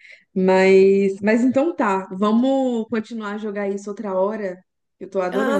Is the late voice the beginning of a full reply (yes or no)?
yes